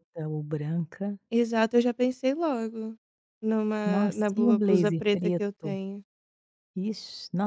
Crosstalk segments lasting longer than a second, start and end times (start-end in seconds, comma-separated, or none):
3.9-5.8